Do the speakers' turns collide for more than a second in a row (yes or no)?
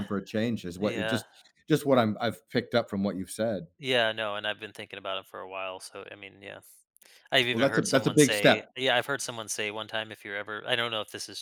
yes